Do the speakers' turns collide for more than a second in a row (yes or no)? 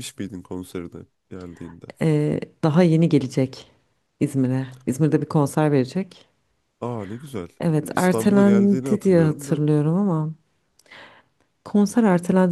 yes